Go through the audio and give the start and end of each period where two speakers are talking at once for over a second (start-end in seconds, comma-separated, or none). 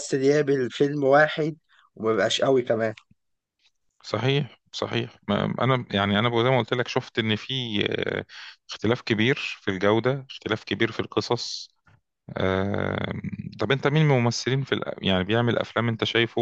none